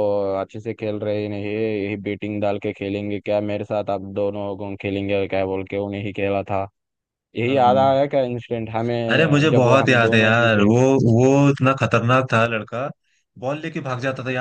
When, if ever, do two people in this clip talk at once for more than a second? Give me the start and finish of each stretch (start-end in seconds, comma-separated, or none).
9.1-10.7